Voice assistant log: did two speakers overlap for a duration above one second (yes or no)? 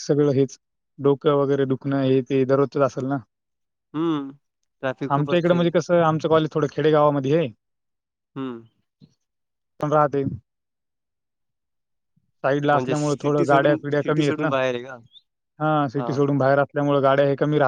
yes